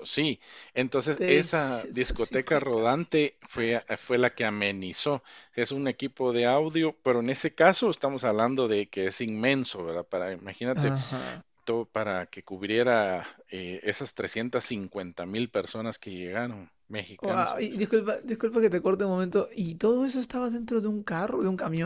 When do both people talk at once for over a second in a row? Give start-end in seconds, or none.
1.1-3.0